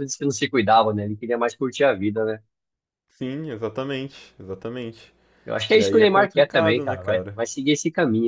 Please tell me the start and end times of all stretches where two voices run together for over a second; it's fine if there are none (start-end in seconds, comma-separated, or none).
5.7-7.4